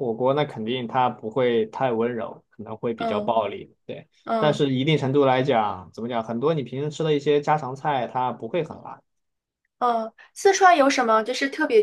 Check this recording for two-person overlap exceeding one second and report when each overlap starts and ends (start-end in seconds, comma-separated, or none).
none